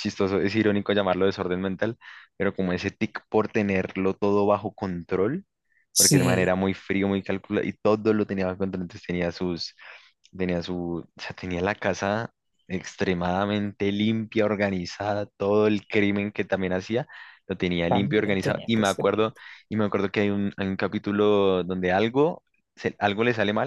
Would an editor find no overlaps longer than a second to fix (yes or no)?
no